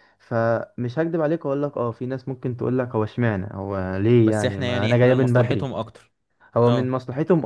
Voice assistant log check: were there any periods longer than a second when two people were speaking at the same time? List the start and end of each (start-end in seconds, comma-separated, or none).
4.2-5.7